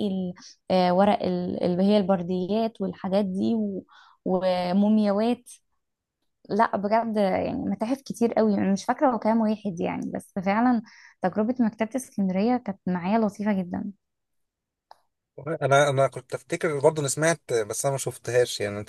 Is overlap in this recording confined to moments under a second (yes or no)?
yes